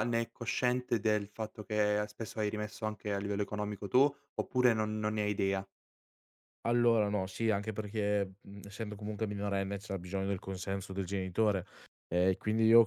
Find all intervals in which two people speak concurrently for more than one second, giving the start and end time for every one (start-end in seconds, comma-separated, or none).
none